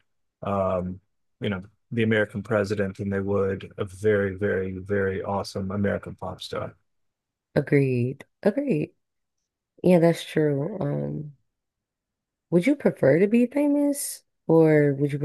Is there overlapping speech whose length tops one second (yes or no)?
no